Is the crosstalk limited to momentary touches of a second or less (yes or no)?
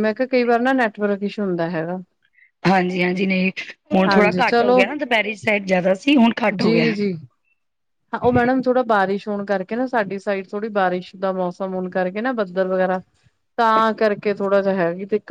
yes